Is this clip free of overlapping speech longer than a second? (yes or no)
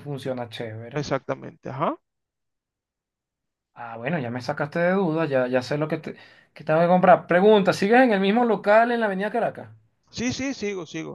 yes